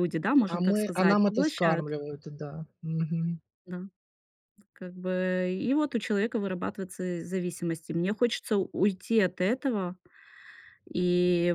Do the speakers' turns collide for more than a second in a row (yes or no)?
yes